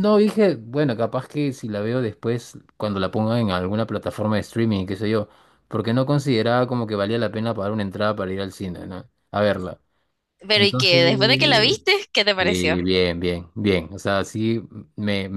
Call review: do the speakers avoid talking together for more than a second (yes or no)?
yes